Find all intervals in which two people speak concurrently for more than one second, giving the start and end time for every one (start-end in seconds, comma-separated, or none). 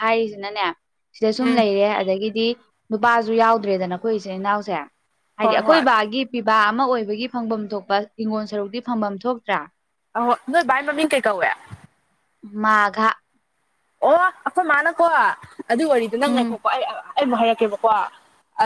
none